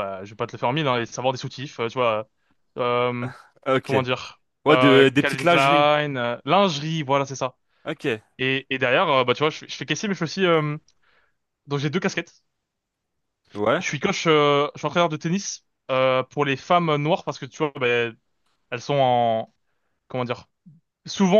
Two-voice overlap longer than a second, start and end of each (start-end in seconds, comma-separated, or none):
4.6-5.9